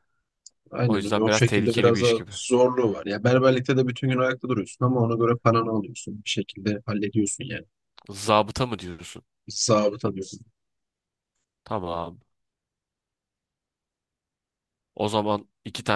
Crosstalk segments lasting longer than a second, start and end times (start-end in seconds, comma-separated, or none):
0.8-2.3